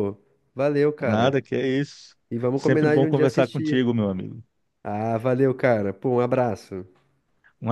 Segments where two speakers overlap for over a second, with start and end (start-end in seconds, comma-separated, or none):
2.5-3.8